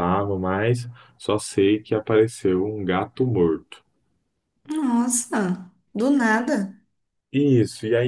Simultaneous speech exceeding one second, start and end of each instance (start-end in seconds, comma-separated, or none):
none